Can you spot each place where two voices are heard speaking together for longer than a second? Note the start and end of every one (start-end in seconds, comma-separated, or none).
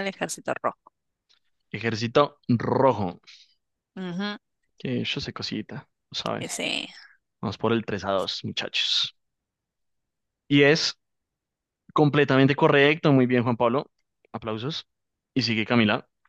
none